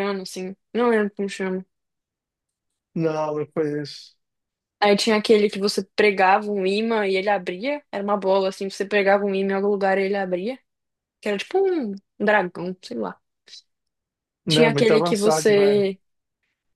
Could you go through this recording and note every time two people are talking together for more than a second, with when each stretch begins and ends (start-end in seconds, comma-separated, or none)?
14.5-15.9